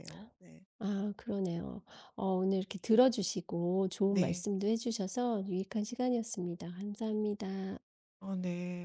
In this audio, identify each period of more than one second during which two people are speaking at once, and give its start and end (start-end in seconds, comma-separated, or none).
none